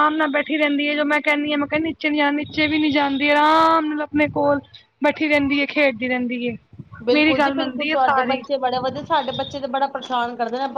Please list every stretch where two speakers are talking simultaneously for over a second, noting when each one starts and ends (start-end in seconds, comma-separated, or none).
7.1-8.4